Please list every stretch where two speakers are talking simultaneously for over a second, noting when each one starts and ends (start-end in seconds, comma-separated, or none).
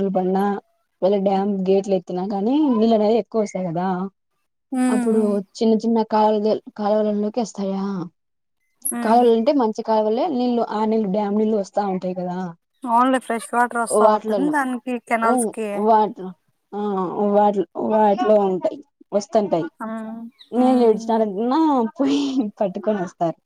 none